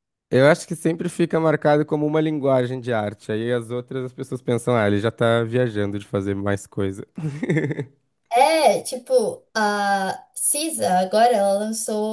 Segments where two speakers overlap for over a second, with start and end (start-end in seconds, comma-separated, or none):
none